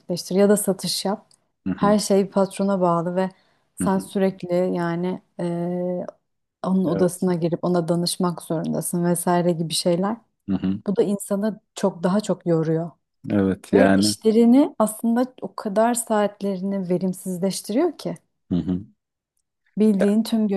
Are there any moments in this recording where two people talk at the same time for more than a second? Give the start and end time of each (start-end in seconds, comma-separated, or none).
none